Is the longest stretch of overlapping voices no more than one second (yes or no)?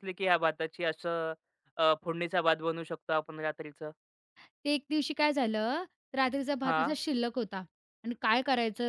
yes